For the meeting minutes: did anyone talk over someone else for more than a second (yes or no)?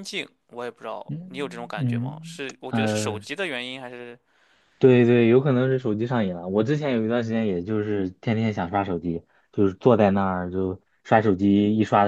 yes